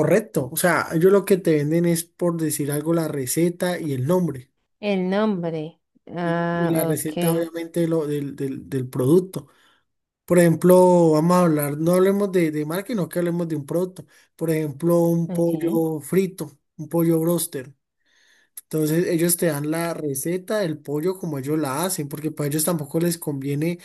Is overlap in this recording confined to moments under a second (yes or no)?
no